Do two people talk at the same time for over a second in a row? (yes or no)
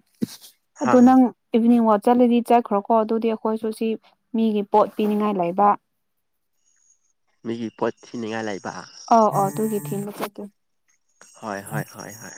no